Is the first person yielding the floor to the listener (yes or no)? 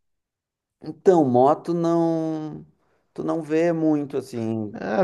yes